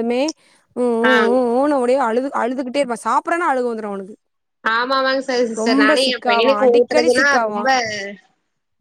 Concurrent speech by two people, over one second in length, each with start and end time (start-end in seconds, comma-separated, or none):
5.6-7.6